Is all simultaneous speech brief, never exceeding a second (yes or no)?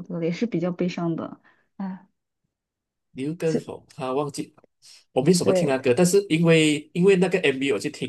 yes